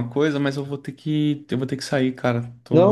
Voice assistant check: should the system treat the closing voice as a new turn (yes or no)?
yes